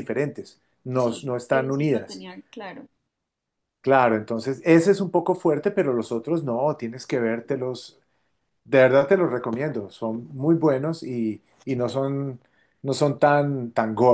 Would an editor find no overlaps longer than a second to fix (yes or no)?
no